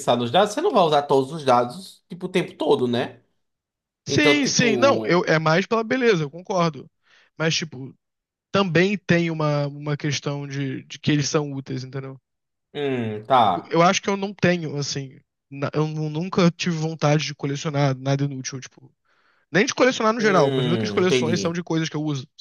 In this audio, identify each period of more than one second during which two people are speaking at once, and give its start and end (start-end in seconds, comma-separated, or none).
4.1-5.3, 20.2-21.6